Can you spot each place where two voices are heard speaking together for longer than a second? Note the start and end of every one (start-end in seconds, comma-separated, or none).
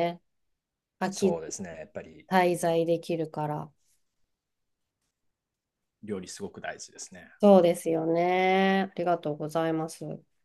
none